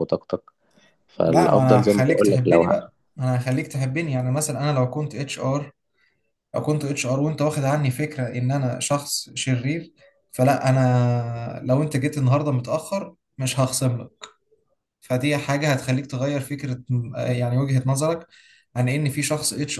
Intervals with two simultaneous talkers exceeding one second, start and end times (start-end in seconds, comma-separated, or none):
1.2-2.9